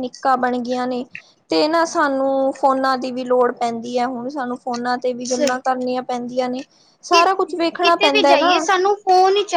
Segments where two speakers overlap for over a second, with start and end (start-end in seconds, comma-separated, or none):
7.1-8.6